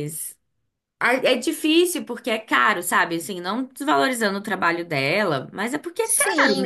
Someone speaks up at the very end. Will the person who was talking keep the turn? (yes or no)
no